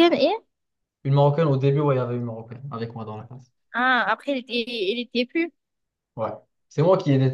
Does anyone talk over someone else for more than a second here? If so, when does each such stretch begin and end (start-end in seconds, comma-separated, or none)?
none